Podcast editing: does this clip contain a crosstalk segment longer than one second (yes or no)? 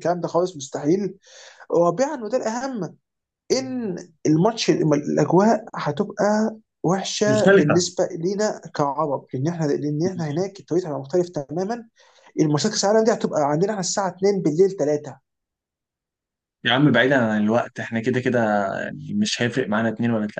no